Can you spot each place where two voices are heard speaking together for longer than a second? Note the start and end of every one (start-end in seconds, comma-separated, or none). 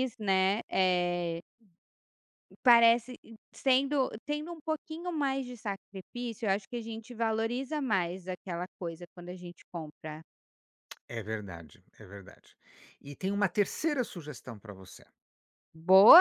none